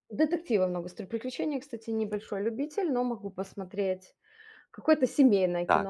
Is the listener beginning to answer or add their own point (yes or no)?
yes